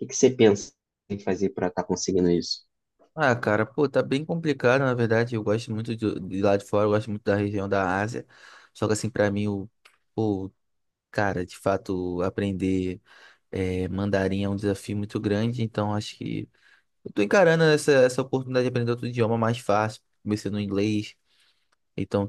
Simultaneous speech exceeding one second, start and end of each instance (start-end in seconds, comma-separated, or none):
none